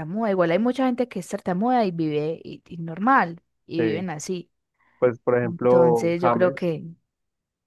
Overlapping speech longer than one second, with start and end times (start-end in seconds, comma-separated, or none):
5.4-6.7